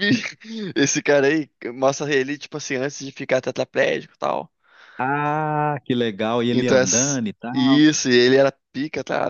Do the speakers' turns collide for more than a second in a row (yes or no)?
yes